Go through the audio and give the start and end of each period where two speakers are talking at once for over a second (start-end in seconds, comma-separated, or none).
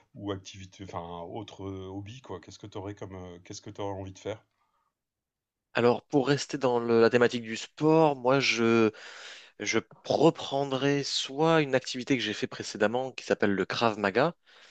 none